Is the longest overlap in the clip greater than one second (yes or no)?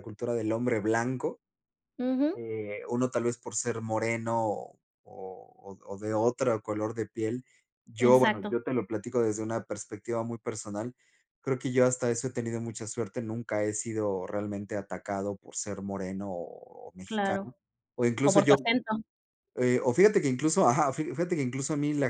no